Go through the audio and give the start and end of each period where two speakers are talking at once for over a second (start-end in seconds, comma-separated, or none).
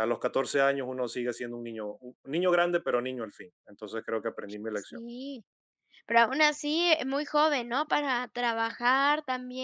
none